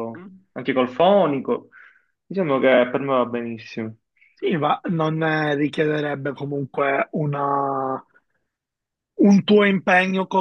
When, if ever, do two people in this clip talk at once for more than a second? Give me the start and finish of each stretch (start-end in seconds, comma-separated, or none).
none